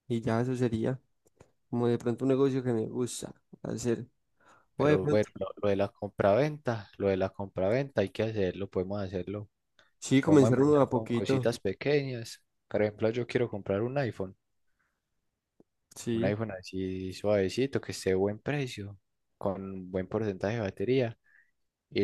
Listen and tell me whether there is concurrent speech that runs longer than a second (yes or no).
yes